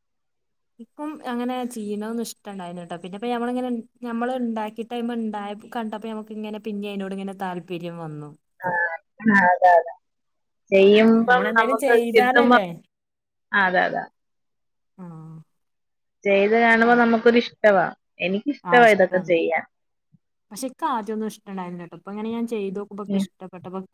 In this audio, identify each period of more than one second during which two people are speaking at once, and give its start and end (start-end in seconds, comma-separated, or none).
11.0-12.6